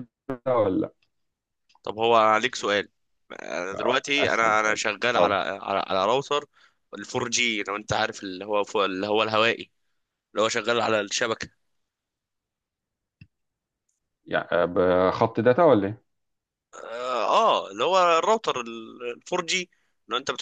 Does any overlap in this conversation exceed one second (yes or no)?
yes